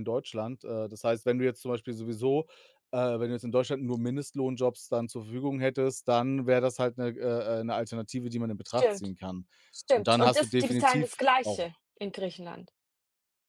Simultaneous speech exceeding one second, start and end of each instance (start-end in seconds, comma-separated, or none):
9.9-11.7